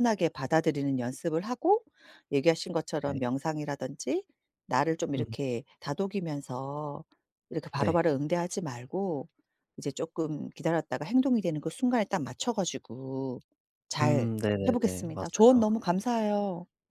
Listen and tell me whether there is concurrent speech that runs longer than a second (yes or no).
yes